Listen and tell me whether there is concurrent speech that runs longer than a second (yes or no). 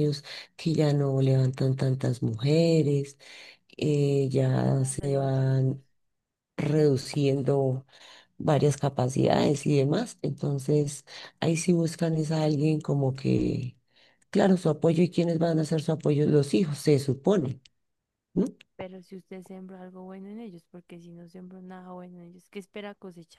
yes